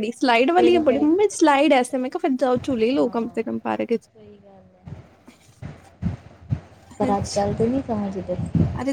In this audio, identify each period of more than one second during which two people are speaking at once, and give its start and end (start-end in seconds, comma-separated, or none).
none